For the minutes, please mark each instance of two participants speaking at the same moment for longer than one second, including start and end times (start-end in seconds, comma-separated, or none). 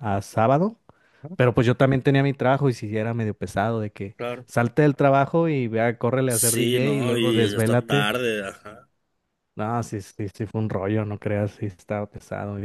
6.3-8.2